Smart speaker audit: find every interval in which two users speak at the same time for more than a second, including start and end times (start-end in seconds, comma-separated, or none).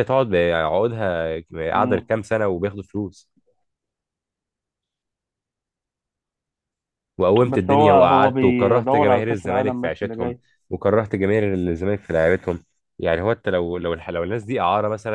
7.5-10.4